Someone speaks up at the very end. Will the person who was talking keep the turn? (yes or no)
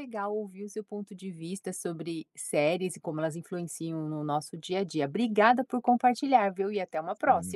no